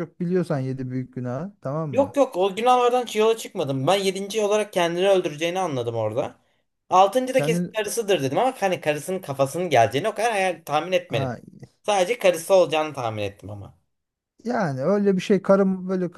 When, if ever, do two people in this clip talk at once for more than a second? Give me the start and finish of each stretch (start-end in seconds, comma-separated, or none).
none